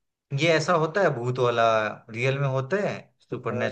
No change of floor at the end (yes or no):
no